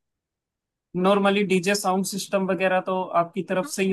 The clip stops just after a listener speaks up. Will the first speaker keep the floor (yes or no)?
no